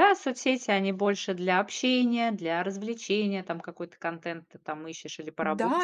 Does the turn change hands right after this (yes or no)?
yes